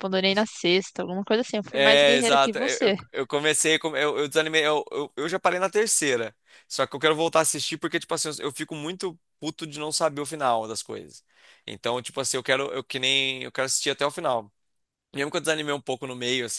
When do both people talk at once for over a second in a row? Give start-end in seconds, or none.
1.7-3.0